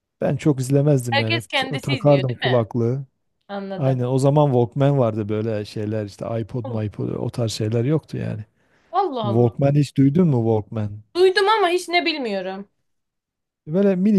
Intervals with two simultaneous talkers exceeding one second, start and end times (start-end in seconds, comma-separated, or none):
1.1-2.7